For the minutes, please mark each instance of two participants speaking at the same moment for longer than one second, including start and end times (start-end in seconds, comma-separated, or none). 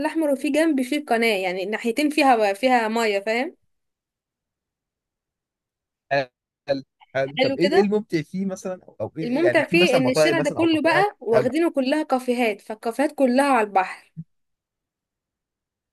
9.2-11.5